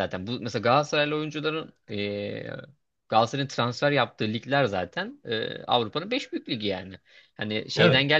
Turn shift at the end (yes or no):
no